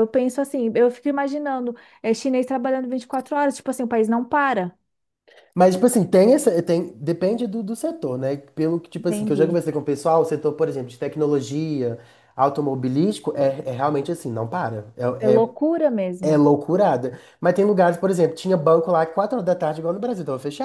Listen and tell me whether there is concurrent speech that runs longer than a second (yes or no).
no